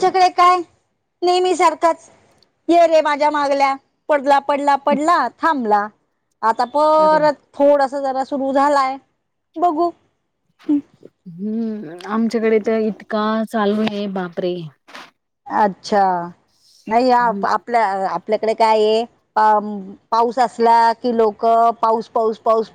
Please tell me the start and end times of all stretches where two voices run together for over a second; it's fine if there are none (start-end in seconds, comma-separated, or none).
none